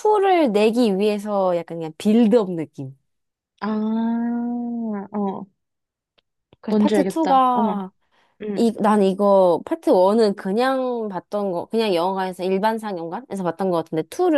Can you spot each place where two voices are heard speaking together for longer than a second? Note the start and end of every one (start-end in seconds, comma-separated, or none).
6.7-7.9